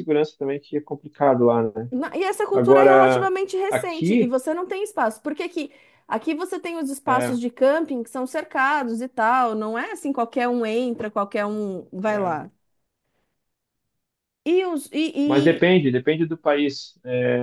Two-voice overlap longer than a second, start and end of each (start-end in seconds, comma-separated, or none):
2.5-4.3